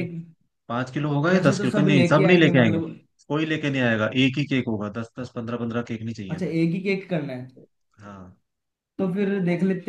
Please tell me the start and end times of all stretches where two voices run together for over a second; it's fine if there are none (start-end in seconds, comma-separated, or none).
1.3-2.8